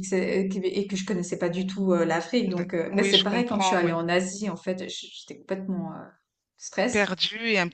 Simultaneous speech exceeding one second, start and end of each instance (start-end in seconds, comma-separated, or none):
2.5-4.0